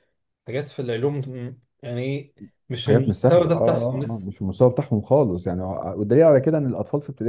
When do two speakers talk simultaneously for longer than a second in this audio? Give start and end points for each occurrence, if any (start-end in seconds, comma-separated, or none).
2.9-4.3